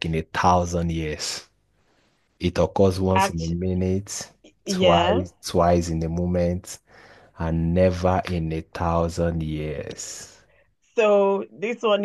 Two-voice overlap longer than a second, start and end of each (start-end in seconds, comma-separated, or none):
none